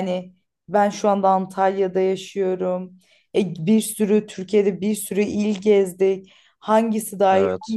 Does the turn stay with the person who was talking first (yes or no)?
yes